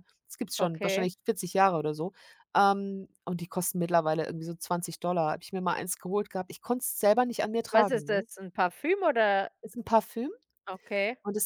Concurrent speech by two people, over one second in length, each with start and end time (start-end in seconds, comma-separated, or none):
none